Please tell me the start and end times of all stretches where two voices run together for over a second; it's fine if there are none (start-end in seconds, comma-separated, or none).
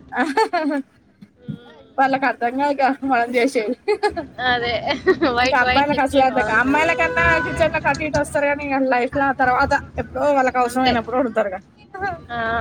5.4-7.0